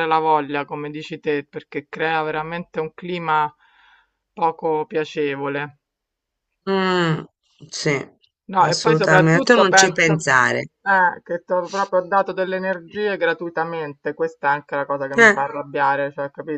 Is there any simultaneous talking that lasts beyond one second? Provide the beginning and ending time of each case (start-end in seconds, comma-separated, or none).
8.6-10.2